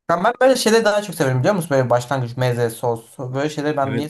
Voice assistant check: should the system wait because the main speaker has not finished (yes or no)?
no